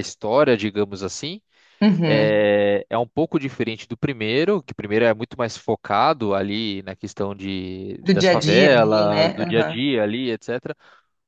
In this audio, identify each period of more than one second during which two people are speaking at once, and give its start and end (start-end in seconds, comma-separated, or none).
8.0-9.8